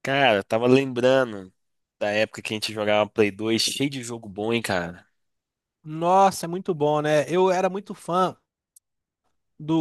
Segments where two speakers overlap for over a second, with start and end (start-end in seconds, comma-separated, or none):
none